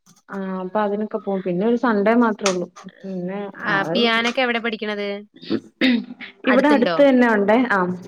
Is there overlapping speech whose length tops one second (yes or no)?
no